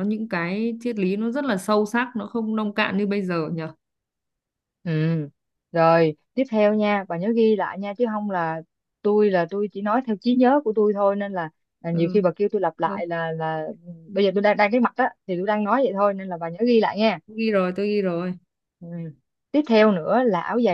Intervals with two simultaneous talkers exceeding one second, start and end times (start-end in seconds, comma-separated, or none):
none